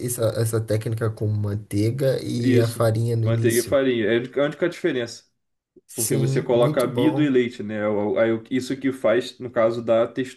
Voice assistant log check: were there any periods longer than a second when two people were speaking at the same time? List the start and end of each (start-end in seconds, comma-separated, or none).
2.4-3.8, 5.9-7.3